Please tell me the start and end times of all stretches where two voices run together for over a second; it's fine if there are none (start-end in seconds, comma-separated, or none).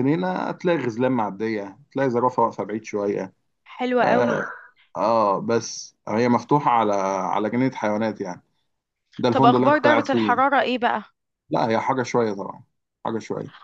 9.3-10.6